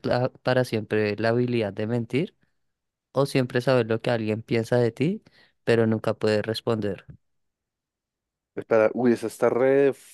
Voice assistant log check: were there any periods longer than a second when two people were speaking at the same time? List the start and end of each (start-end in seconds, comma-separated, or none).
none